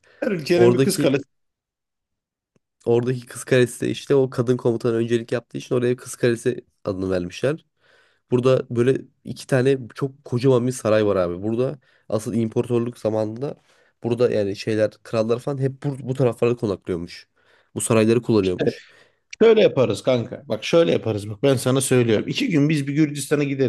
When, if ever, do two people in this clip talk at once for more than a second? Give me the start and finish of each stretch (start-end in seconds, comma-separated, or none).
none